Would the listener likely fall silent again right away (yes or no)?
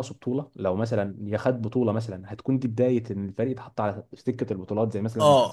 no